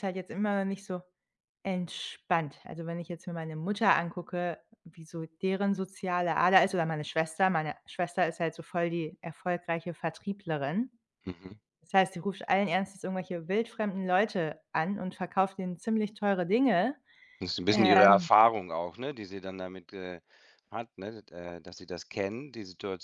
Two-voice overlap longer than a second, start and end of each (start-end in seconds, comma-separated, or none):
none